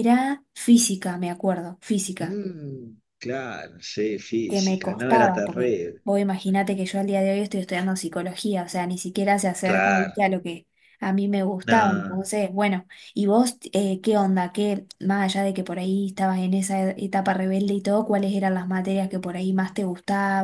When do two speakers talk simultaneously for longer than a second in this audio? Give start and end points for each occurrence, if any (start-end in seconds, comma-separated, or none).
4.5-6.0